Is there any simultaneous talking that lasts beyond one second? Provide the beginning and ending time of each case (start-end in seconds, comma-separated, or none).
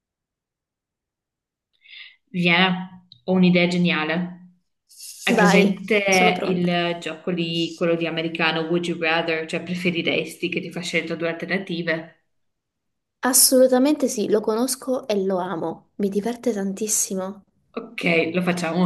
5.3-6.8